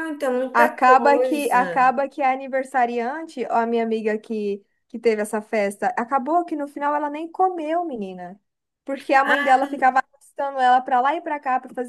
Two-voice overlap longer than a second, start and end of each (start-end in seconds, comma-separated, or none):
0.5-2.0